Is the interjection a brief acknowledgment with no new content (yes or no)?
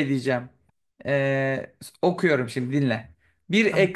yes